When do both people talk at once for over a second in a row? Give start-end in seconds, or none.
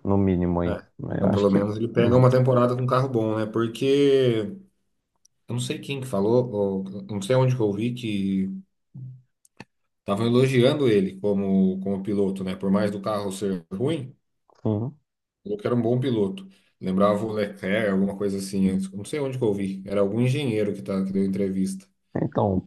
0.6-2.2